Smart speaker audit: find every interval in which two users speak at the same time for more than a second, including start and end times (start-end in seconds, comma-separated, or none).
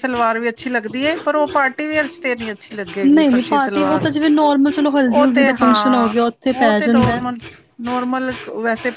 5.0-7.2